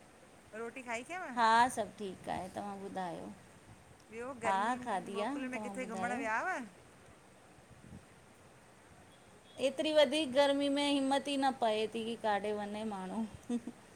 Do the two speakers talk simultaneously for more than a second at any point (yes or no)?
yes